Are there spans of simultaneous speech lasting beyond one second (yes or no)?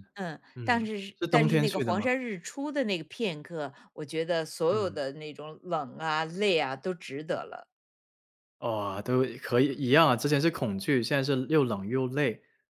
yes